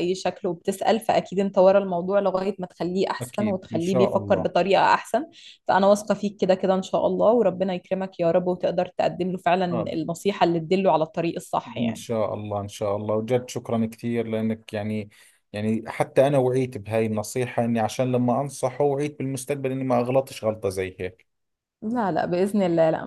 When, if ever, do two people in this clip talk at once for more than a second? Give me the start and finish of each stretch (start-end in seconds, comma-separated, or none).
3.2-4.5